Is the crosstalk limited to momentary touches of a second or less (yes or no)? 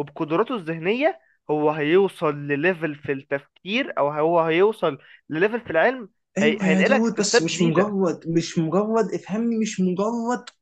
no